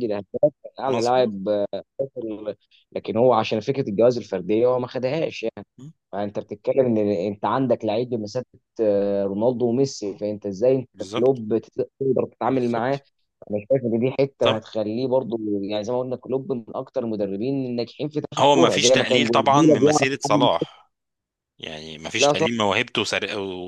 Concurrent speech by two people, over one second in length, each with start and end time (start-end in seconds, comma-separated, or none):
18.4-20.5